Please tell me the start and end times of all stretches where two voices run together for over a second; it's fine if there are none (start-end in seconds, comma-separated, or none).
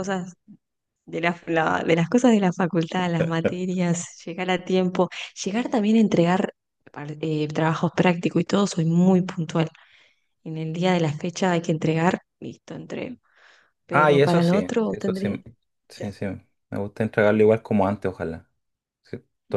13.9-15.3